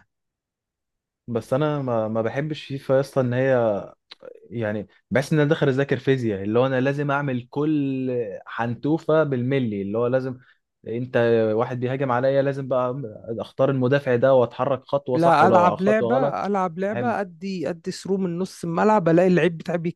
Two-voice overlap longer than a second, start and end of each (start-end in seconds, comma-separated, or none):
15.1-17.2